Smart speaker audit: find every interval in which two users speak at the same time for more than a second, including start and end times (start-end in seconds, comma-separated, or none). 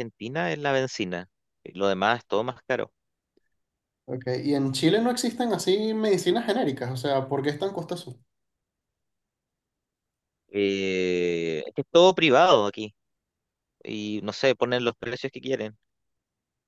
none